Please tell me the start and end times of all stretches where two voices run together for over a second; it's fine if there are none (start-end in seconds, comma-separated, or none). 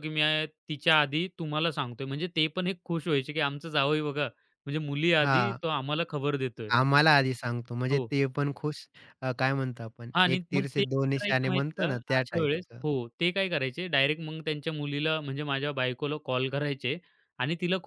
10.1-12.8